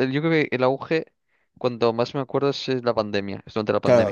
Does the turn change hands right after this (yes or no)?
yes